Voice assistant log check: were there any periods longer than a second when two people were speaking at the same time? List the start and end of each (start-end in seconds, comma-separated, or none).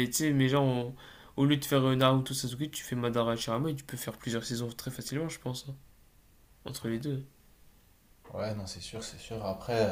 none